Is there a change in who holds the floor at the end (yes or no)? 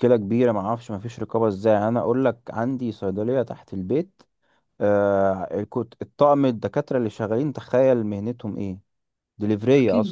yes